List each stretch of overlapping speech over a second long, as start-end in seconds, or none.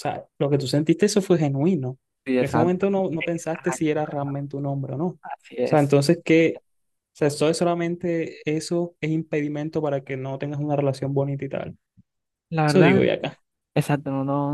2.4-4.4